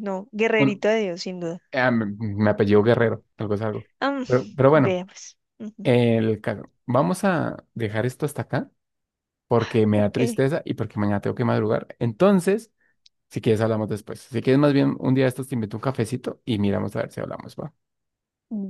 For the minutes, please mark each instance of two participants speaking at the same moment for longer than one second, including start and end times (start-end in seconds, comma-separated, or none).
none